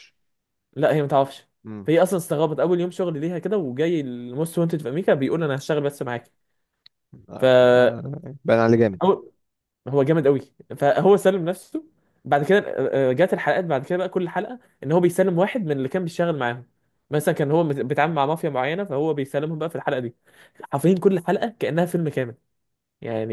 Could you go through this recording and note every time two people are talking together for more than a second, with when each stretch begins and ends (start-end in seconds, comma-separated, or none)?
none